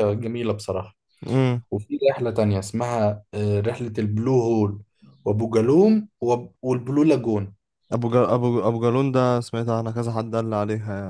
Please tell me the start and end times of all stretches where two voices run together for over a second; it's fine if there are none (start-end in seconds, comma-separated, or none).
none